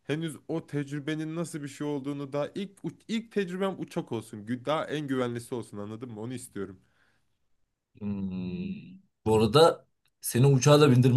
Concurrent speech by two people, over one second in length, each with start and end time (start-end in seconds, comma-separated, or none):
none